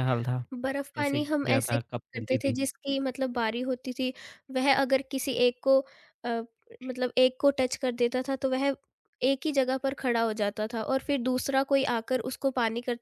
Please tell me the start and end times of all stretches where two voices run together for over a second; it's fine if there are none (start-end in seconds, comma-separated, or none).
0.9-2.5